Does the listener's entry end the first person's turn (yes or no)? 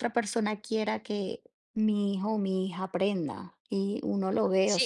yes